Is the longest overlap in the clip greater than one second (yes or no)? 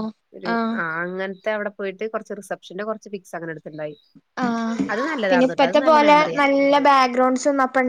no